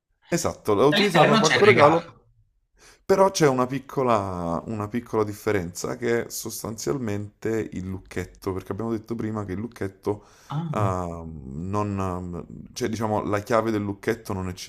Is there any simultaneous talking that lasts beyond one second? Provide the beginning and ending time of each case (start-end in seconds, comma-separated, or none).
0.9-2.2